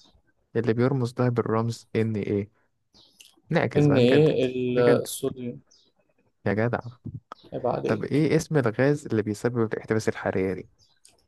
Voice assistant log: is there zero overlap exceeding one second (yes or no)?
no